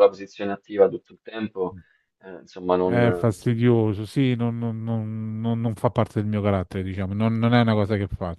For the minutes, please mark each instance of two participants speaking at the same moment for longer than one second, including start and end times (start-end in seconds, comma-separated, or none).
none